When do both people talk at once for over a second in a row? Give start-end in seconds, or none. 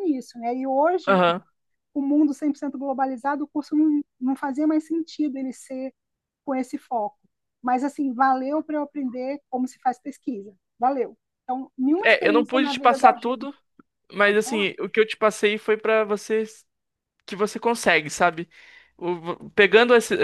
12.0-13.6